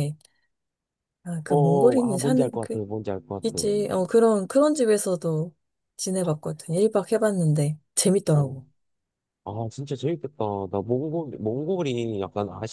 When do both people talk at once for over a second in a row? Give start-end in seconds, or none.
1.5-2.8